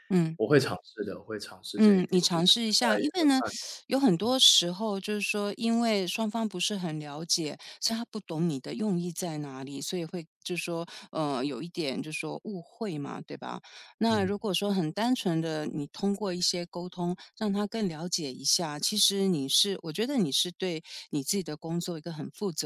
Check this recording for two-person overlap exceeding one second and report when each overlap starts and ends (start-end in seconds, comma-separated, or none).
1.8-3.3